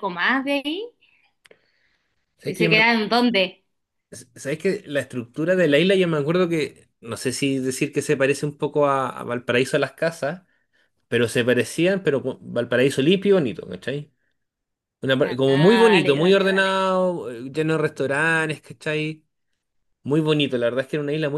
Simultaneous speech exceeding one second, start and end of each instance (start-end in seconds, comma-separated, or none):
15.2-16.7